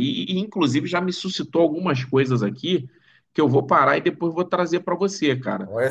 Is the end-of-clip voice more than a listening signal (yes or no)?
yes